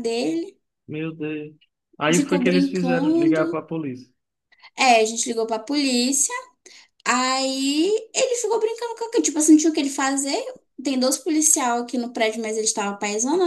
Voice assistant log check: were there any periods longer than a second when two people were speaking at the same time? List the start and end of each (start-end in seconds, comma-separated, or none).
2.1-3.6